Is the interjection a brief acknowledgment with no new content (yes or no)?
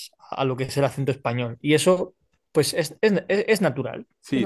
no